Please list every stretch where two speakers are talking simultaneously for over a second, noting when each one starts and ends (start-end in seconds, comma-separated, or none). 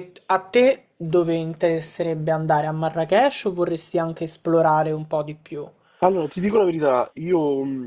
none